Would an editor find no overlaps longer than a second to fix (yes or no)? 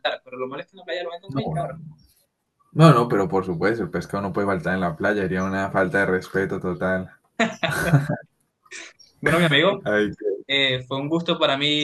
yes